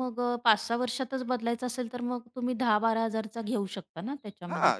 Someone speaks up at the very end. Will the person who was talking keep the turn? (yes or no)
no